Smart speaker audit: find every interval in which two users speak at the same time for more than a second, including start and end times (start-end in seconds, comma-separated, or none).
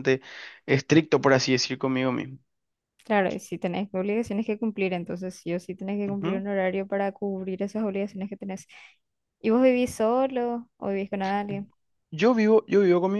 none